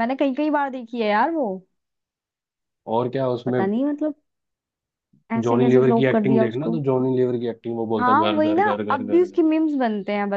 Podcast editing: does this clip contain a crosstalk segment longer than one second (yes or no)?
yes